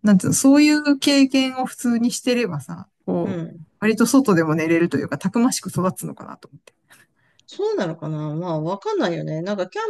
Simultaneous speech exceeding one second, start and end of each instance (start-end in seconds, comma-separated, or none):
none